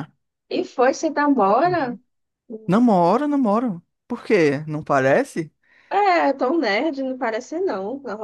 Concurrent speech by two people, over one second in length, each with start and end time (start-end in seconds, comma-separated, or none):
none